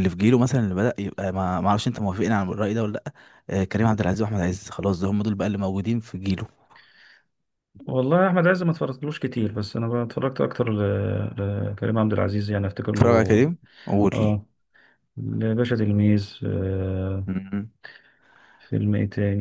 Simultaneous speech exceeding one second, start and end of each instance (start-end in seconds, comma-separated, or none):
none